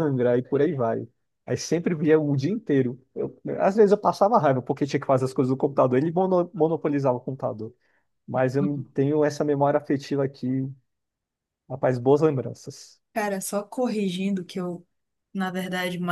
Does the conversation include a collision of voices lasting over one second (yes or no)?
no